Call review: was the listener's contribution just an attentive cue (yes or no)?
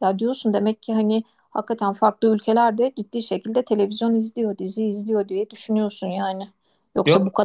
yes